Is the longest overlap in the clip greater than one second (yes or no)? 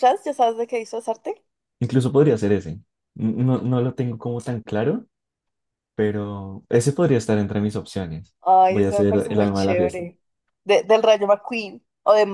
yes